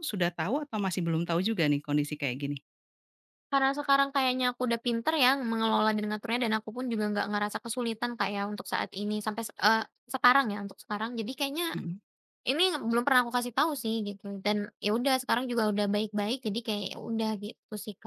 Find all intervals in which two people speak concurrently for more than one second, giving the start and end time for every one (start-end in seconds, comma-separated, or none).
none